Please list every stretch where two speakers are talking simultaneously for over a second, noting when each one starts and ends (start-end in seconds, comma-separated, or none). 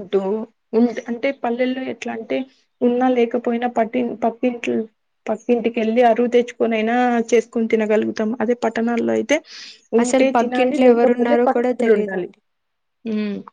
10.0-12.3